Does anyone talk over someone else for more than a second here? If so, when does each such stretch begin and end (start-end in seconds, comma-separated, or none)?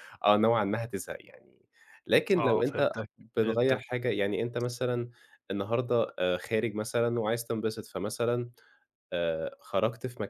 2.4-4.0